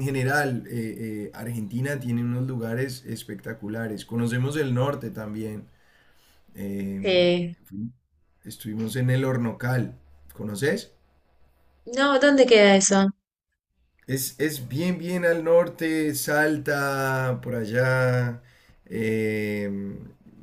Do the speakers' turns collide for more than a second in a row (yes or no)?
no